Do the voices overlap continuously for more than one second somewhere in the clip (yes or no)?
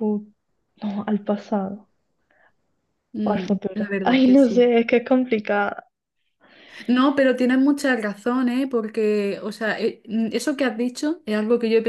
yes